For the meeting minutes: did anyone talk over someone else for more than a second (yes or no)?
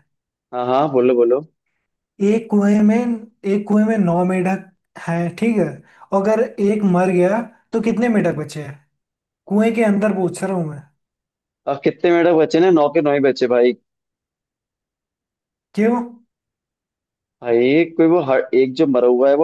no